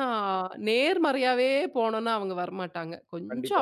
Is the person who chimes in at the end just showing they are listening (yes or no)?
no